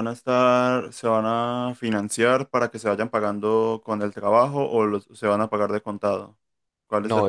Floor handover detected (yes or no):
yes